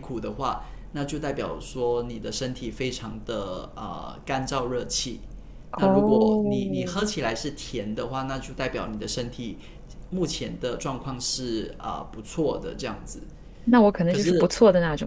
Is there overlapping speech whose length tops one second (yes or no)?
yes